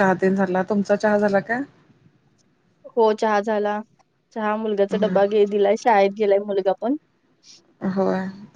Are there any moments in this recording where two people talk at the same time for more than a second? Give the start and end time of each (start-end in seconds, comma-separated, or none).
none